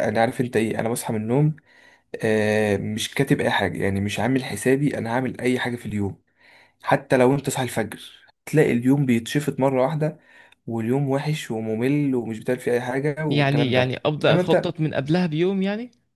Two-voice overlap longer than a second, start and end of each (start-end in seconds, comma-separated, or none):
13.3-14.8